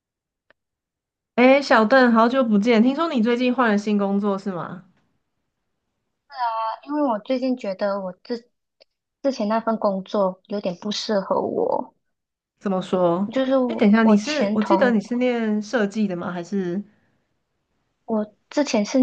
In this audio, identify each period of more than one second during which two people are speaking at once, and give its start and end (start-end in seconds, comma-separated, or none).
13.7-15.0